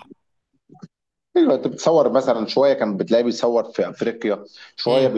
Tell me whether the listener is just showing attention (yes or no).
yes